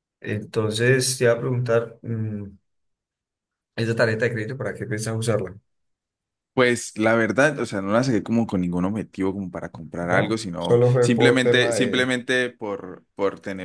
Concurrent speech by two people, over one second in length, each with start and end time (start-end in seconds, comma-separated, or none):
10.1-12.1